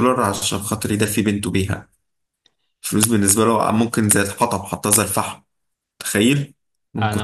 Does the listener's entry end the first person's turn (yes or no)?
yes